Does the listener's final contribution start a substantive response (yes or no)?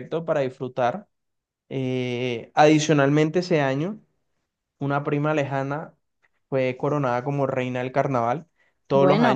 no